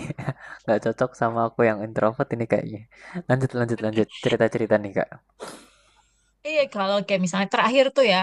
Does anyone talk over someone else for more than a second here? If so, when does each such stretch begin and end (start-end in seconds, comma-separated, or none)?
none